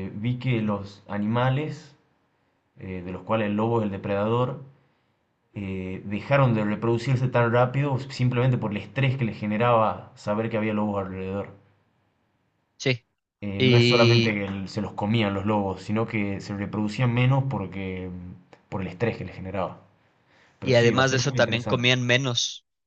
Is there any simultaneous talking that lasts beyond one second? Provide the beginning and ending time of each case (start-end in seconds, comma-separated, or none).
20.6-21.9